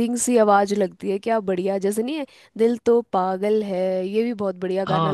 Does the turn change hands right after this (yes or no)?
yes